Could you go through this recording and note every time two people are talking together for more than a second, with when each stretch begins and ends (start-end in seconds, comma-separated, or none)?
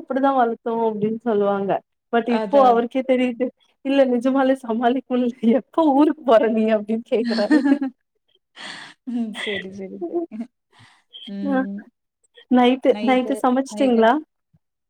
none